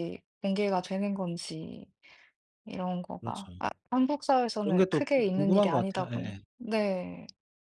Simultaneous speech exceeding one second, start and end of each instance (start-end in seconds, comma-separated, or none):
4.6-6.4